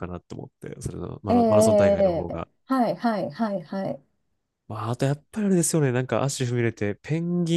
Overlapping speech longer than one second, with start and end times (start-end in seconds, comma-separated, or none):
1.3-2.5